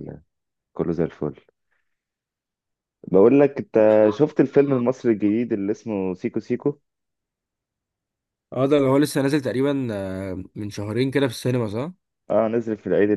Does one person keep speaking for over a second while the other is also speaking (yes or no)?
no